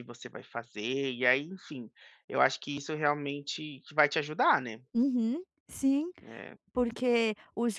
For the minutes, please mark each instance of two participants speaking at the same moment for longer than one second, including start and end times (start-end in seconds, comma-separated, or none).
none